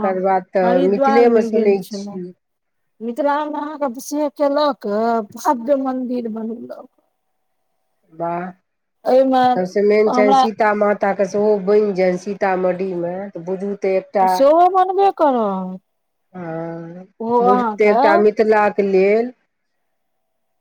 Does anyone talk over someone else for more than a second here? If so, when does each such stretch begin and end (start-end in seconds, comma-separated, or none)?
0.7-2.2